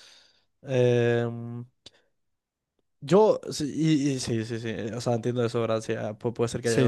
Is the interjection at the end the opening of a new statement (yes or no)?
no